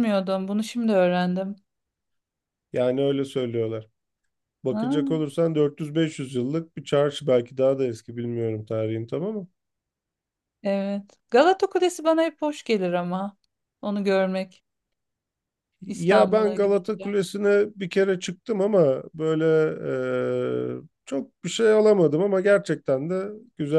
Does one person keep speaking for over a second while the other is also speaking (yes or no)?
yes